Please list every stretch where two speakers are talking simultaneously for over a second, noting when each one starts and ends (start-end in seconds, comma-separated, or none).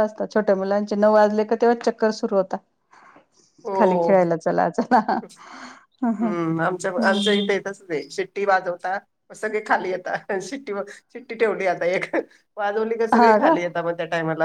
none